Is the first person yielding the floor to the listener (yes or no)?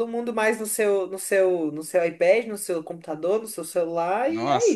yes